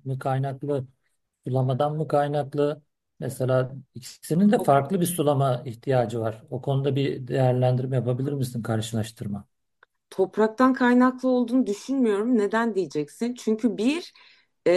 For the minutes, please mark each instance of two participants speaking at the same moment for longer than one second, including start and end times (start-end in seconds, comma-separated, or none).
none